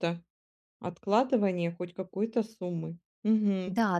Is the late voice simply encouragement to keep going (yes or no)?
no